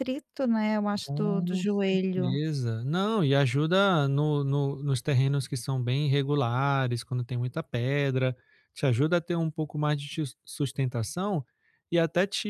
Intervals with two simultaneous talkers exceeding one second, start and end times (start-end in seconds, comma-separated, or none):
1.0-2.4